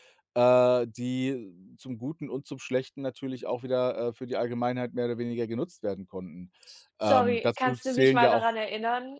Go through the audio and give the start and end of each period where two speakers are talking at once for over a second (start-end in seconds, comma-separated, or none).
7.0-8.5